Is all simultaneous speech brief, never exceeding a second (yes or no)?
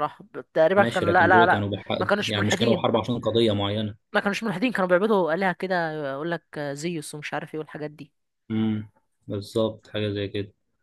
no